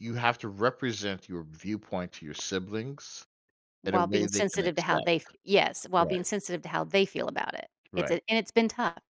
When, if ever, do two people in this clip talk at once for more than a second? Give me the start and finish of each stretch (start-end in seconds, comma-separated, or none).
3.8-5.1